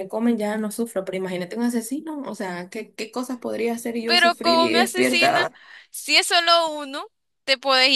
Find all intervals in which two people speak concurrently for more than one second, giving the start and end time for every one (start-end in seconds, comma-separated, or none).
4.0-5.4